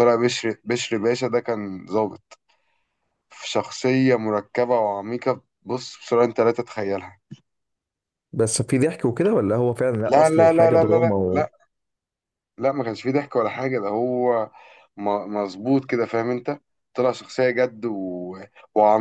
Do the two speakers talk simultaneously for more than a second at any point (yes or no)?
yes